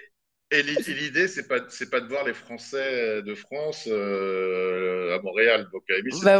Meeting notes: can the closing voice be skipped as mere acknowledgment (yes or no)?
yes